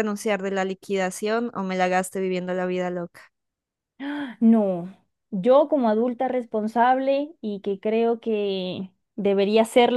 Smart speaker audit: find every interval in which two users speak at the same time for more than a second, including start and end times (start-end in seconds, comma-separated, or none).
none